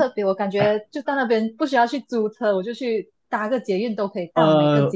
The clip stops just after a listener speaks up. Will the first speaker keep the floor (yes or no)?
no